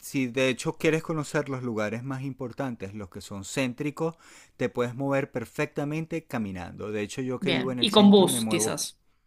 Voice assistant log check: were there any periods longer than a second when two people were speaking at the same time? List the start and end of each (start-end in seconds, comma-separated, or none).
7.4-8.8